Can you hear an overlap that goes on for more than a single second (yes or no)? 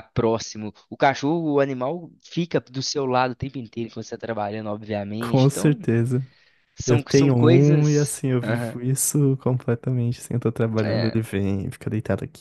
yes